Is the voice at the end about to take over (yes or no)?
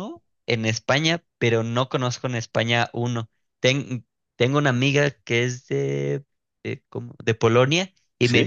no